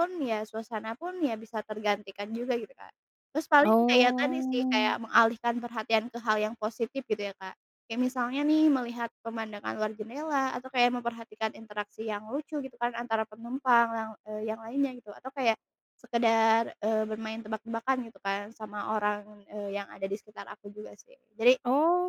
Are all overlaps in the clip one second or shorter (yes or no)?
no